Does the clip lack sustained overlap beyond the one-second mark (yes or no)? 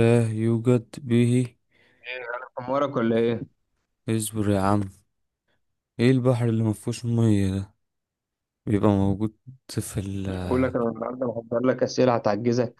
yes